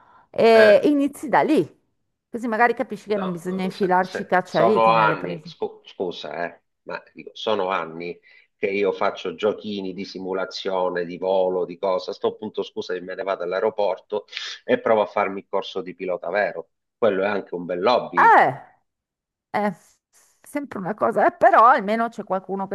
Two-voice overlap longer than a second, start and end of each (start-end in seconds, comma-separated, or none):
3.1-5.5